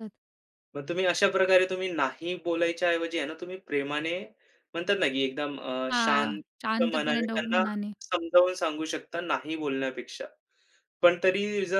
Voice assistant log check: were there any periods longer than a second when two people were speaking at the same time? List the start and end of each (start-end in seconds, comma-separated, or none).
5.9-7.6